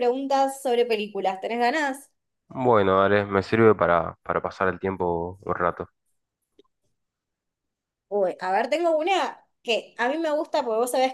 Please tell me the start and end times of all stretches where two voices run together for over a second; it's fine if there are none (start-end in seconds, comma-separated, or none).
none